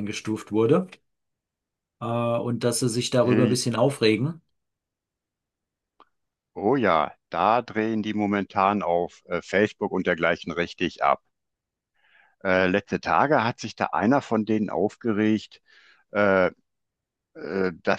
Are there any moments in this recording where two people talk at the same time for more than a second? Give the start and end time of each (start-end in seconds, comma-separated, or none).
none